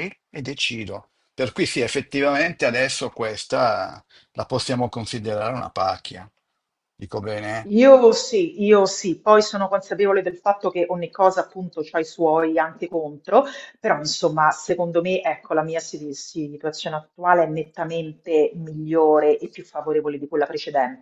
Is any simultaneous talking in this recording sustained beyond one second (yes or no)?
no